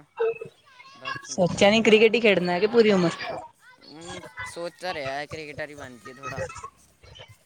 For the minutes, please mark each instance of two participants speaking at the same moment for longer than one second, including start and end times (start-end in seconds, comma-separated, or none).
none